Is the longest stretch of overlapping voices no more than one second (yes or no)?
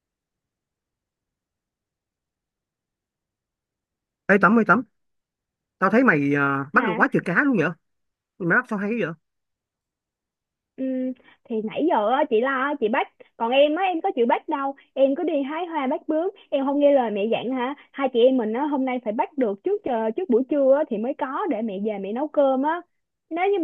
yes